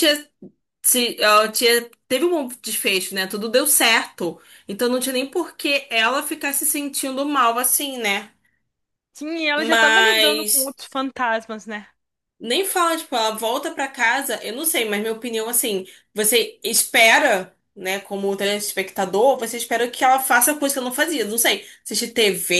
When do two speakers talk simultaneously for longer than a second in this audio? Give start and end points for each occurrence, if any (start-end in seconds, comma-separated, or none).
9.6-10.8